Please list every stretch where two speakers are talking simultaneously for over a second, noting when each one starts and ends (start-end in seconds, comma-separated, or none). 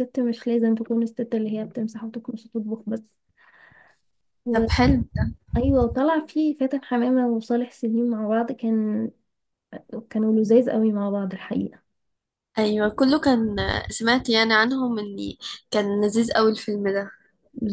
none